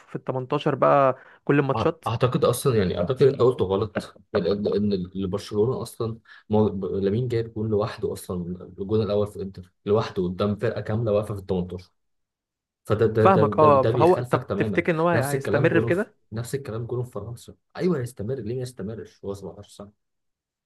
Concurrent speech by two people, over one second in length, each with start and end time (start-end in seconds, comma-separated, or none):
13.2-16.1